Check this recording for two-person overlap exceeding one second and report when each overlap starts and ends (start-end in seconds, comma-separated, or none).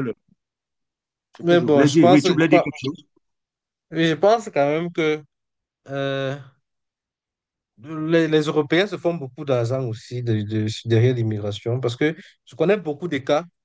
1.4-2.6